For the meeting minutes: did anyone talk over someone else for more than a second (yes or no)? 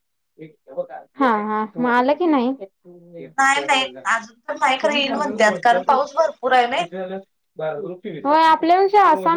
no